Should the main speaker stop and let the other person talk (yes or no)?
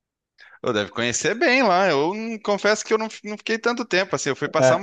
no